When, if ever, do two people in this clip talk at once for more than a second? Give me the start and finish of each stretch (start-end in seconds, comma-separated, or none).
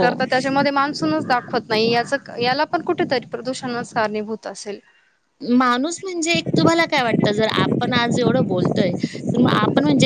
none